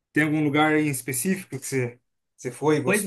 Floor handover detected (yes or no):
yes